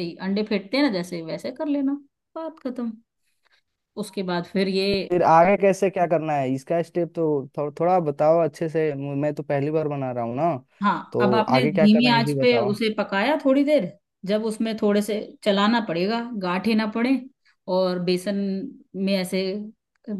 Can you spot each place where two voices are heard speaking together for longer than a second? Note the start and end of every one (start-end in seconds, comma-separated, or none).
11.1-12.7